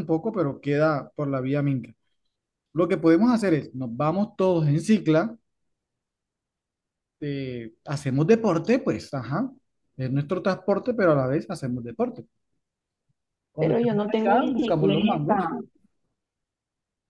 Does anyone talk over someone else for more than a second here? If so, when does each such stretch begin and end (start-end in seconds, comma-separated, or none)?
13.6-15.3